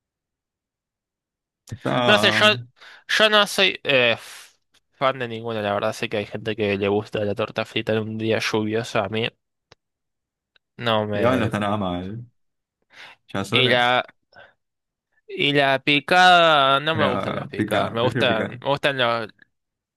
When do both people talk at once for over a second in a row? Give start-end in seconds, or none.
16.9-18.6